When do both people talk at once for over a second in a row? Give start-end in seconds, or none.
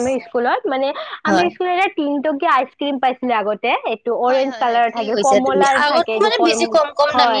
4.3-6.5